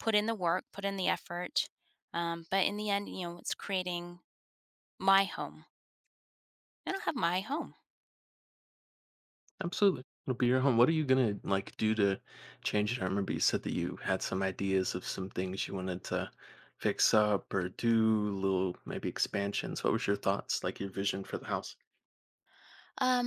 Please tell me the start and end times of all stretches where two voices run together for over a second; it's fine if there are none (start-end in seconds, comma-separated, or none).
none